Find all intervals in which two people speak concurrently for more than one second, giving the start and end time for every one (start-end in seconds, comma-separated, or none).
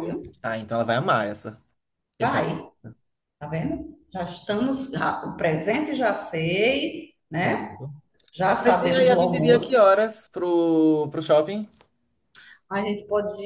8.6-9.9